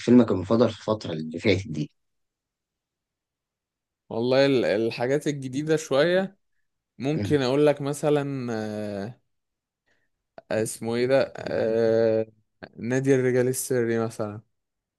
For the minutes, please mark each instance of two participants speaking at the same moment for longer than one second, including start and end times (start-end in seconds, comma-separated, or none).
none